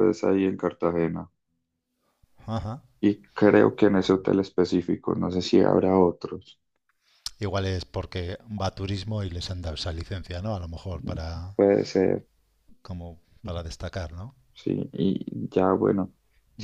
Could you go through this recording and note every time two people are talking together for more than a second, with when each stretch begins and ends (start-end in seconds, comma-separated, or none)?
none